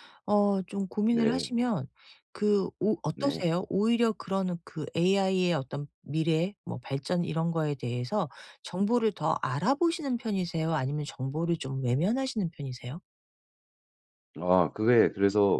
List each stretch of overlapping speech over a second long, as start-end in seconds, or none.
none